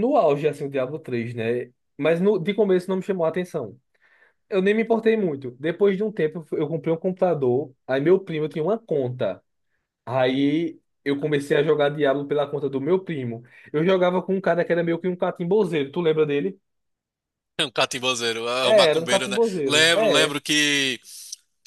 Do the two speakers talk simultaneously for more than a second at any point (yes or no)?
yes